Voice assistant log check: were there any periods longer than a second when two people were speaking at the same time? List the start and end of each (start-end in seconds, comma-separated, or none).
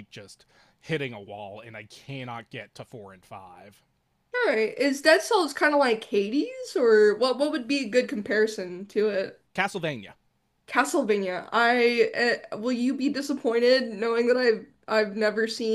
none